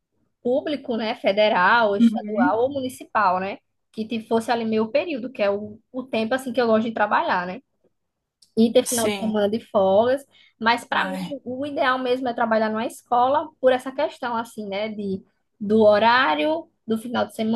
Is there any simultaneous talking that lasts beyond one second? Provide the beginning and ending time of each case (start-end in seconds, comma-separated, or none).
none